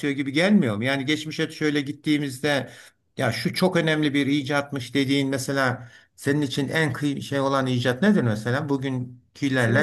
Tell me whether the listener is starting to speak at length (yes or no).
yes